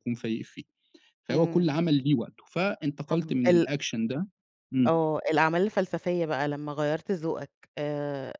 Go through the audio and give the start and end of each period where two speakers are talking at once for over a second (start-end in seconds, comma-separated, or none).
none